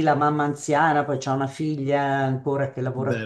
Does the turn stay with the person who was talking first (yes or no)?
yes